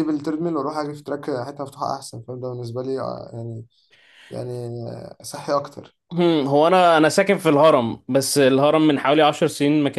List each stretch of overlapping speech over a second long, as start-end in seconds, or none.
none